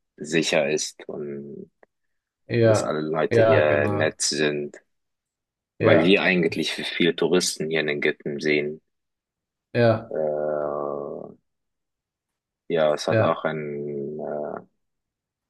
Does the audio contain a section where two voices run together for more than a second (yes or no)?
yes